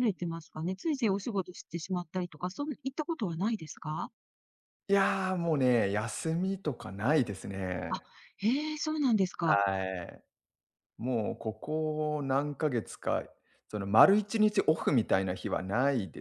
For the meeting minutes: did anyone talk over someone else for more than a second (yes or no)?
no